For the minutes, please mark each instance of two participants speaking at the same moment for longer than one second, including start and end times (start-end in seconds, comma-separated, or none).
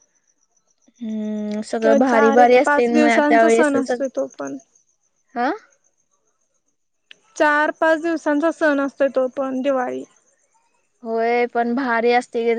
1.8-4.0